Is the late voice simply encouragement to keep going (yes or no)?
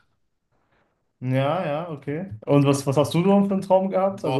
no